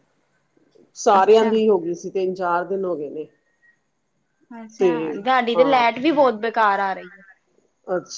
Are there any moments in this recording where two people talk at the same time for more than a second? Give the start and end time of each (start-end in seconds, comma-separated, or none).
none